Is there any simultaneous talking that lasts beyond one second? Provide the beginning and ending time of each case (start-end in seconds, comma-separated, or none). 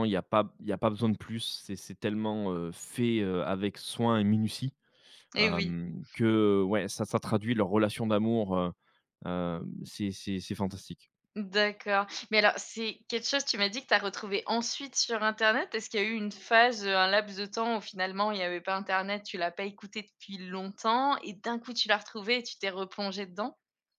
none